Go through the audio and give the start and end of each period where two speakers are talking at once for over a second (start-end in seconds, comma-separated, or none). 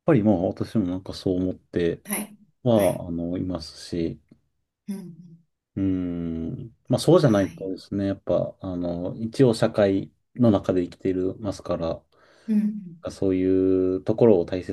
none